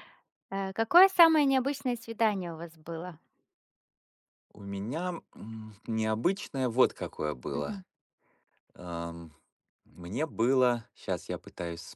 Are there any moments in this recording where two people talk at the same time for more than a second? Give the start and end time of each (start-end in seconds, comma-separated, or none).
none